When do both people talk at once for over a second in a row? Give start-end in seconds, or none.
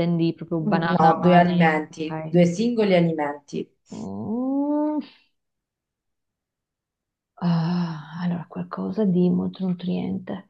0.6-2.4